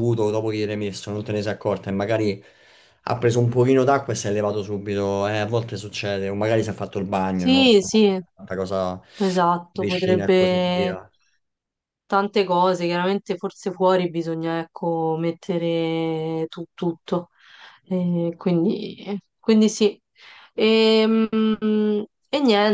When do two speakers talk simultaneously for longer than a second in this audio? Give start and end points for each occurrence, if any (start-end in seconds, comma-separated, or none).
9.7-10.9